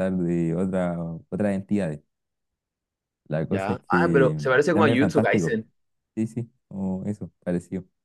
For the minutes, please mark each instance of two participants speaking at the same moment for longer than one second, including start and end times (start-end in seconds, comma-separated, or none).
3.5-5.6